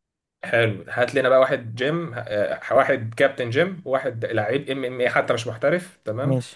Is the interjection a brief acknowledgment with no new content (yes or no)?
yes